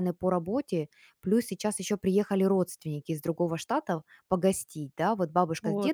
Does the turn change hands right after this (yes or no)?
no